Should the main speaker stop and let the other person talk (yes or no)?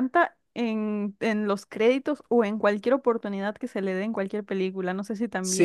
yes